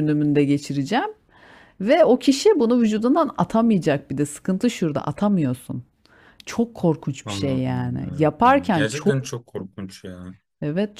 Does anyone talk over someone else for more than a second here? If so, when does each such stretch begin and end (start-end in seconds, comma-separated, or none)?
7.2-9.2